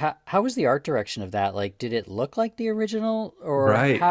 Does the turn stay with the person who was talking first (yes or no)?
no